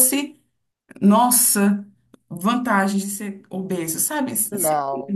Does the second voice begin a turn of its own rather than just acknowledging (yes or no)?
no